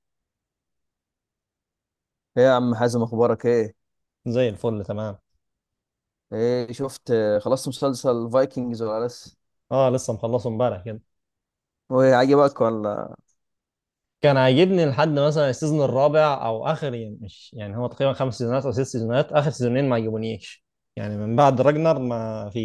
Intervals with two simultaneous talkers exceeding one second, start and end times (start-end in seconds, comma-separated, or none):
none